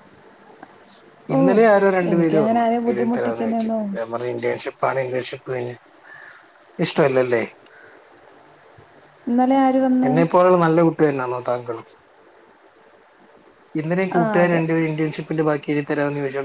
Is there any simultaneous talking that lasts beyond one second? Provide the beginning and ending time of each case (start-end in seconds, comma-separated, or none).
2.1-3.9